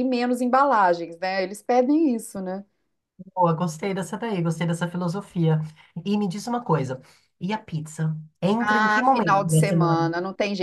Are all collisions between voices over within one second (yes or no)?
no